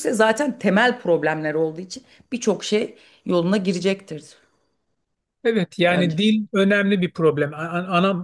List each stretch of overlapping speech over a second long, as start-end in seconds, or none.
none